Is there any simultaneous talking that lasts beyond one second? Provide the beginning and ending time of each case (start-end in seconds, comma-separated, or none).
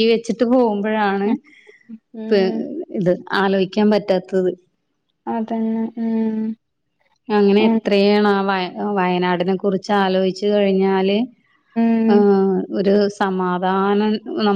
none